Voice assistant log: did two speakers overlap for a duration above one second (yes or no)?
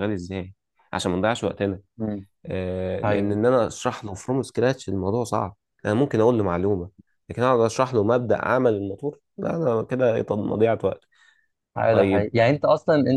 no